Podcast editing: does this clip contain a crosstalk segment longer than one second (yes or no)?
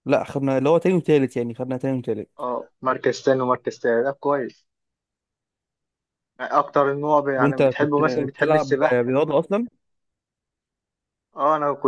yes